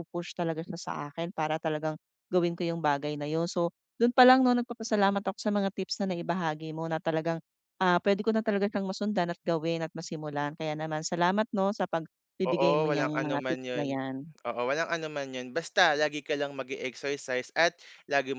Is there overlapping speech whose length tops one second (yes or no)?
yes